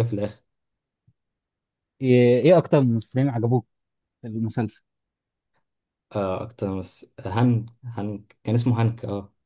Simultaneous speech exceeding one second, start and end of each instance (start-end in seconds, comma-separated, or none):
none